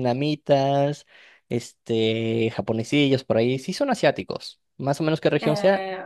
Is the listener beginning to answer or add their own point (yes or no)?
yes